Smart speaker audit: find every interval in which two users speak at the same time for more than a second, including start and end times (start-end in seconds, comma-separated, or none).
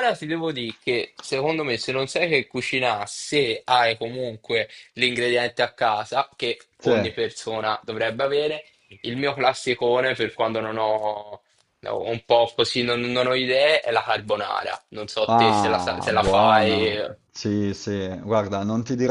15.3-17.2